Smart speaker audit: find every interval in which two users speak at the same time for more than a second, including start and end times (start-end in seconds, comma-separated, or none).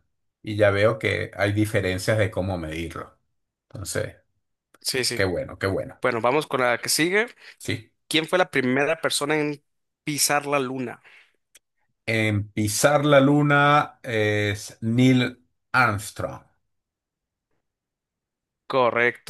none